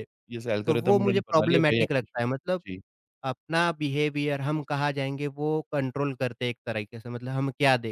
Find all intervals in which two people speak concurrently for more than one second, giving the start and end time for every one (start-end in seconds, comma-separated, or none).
0.7-2.2